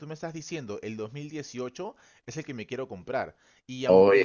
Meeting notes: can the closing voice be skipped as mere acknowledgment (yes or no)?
yes